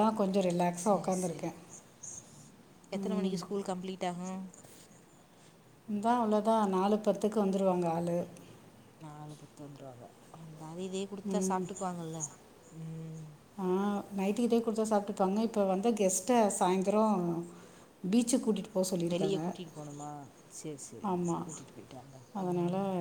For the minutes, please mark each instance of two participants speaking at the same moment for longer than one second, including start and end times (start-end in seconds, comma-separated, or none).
none